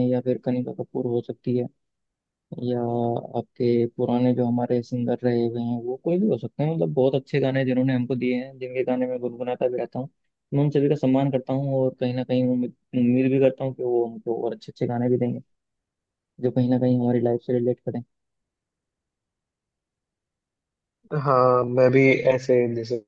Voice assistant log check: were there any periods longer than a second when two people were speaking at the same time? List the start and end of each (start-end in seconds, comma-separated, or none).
none